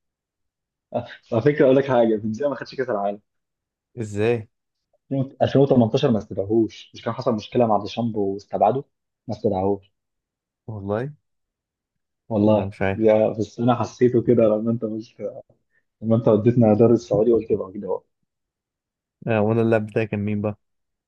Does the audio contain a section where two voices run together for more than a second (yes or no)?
no